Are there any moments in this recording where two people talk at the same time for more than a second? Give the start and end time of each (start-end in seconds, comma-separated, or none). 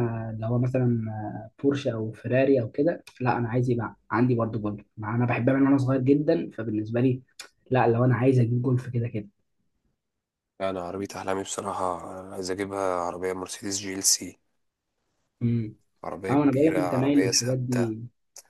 16.3-17.9